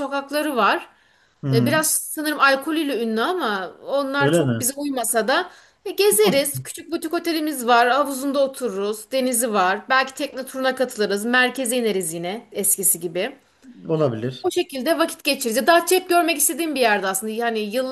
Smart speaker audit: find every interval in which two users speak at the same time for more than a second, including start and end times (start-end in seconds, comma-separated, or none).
none